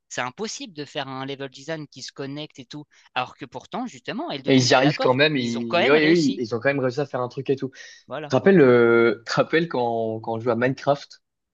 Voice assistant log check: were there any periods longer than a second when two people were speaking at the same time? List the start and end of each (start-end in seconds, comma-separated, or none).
4.5-6.4